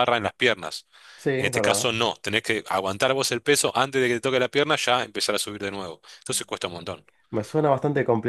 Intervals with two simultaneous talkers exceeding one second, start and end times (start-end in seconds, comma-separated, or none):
none